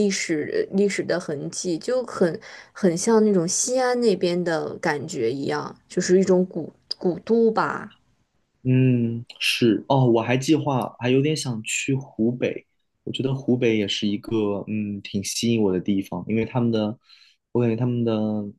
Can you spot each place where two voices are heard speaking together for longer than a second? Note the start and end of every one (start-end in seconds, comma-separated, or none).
none